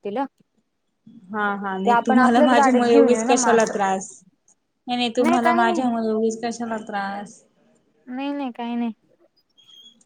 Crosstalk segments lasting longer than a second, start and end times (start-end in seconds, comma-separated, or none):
1.9-3.7